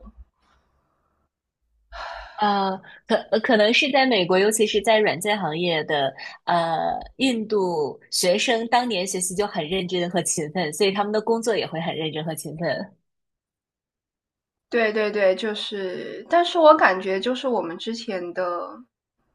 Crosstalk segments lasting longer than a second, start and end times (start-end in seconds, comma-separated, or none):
none